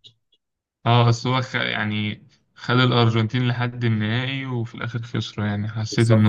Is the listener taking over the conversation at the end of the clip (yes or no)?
yes